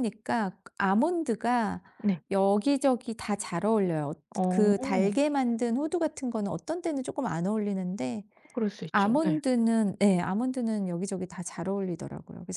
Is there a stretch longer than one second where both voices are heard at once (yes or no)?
no